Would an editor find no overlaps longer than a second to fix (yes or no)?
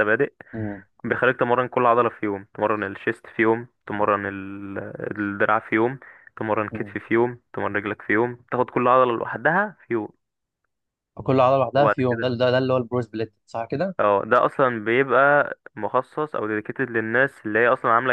yes